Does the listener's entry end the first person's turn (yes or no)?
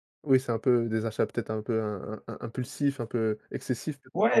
yes